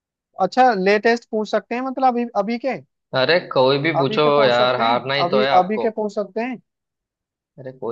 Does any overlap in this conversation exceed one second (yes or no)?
yes